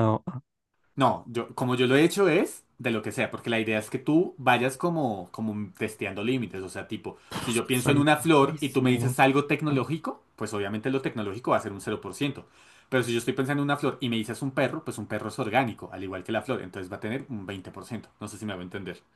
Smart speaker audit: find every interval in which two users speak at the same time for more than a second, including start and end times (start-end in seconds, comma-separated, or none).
7.5-9.2